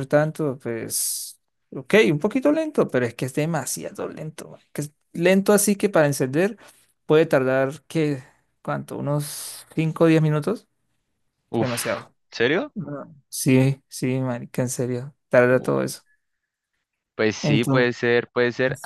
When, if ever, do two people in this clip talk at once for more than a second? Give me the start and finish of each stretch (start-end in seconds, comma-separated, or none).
none